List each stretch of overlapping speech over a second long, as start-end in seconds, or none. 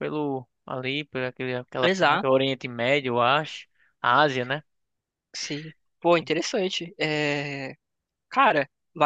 none